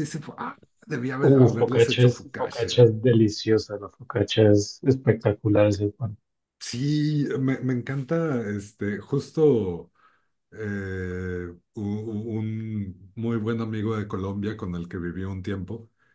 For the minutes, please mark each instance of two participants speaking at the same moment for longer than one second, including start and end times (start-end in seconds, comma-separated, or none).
1.2-2.8